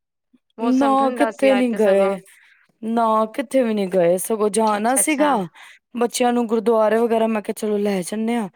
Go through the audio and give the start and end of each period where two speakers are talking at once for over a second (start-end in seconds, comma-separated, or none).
0.6-2.1